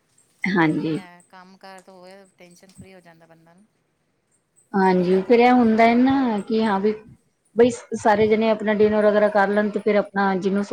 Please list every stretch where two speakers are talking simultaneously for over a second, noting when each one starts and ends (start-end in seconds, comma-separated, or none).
none